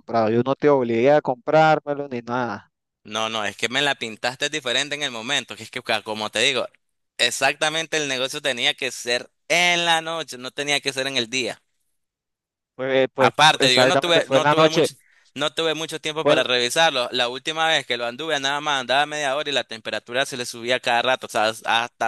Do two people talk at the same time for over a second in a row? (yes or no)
yes